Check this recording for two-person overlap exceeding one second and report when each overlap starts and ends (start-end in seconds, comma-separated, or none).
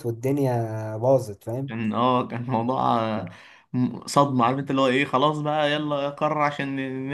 none